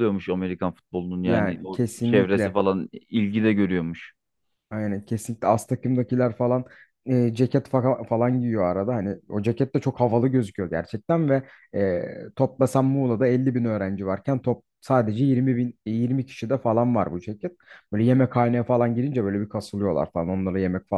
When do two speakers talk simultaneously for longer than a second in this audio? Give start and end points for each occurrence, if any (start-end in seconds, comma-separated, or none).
1.2-2.6